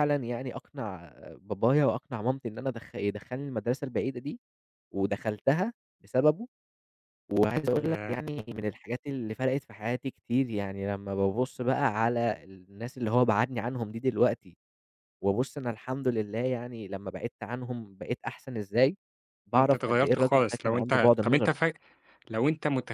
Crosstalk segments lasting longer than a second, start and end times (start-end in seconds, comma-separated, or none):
19.5-21.5